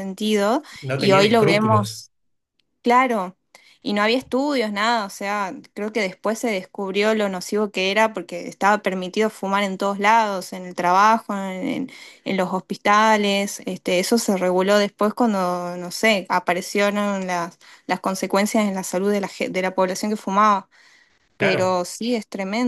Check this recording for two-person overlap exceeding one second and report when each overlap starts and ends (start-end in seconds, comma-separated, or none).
0.8-2.0